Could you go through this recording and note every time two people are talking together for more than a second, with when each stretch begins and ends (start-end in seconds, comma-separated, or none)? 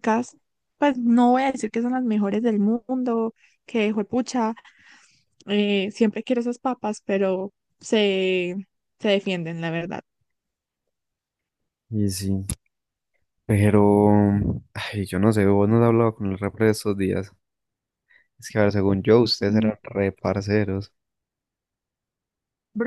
none